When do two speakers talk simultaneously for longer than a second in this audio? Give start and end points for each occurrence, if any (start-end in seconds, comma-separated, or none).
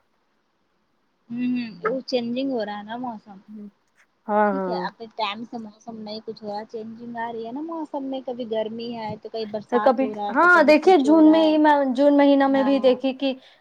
9.7-11.6